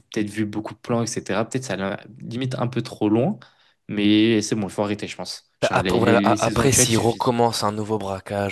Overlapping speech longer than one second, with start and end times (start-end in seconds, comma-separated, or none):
5.7-7.3